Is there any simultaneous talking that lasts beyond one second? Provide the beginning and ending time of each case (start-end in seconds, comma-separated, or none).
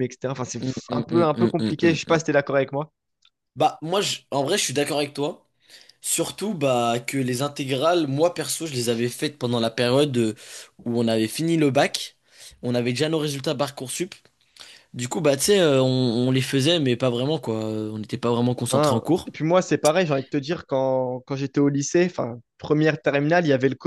0.6-2.4